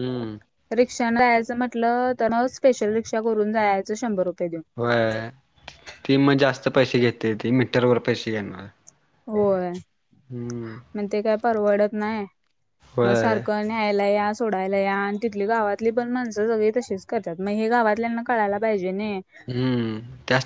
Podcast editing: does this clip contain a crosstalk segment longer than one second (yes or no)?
no